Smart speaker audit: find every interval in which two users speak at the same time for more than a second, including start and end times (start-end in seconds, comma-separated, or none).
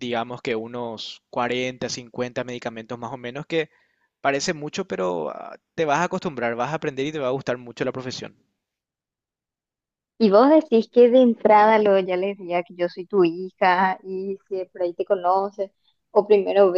none